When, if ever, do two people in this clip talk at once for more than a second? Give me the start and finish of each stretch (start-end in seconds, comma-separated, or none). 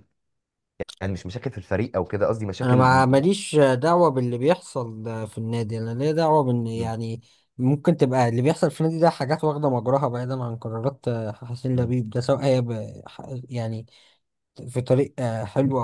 none